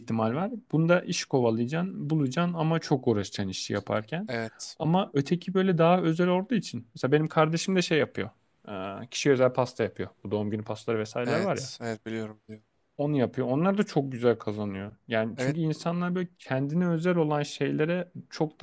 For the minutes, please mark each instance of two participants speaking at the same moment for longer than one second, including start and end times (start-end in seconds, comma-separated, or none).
none